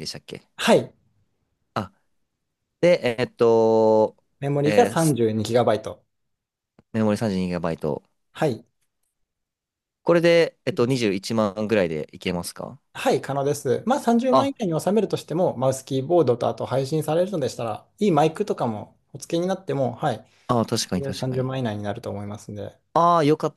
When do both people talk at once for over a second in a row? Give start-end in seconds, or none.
none